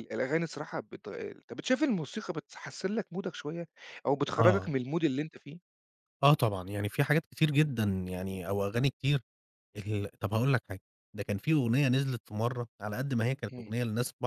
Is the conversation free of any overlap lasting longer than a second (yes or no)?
yes